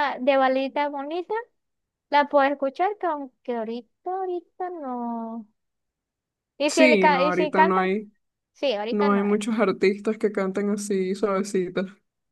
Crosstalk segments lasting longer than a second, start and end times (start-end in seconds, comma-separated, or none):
6.7-7.9